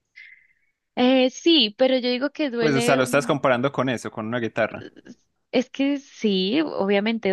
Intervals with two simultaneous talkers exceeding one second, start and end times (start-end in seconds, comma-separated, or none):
none